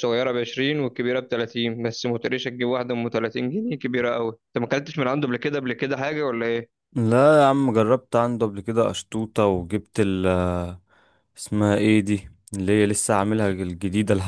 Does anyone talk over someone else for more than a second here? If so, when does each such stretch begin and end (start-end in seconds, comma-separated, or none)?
none